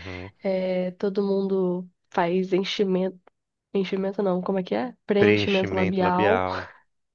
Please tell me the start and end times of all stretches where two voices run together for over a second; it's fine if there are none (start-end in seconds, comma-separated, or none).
5.2-6.4